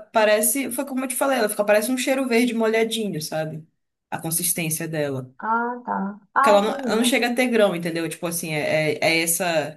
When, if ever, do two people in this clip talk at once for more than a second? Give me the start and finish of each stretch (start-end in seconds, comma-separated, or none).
none